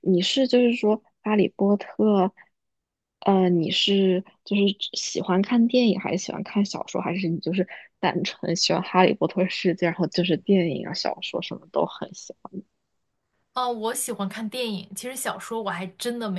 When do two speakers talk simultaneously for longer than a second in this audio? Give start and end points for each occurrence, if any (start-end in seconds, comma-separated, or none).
none